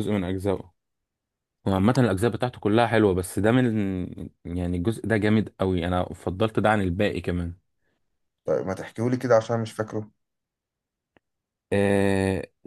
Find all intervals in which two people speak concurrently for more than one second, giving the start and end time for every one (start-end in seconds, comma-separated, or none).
none